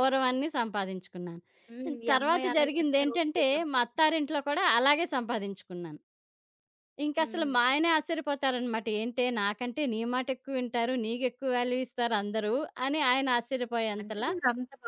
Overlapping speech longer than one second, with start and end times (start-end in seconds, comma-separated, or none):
2.1-3.8